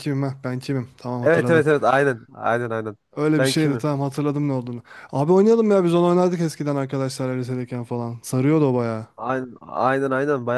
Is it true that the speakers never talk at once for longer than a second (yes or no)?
yes